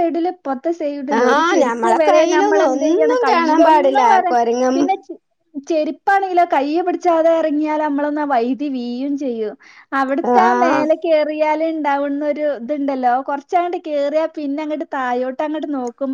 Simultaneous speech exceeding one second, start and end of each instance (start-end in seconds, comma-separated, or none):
1.2-4.3